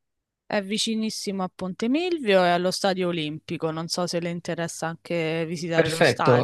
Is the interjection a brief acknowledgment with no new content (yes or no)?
no